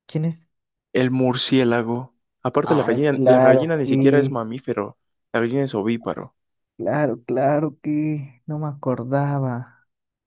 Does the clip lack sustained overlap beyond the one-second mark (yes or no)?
no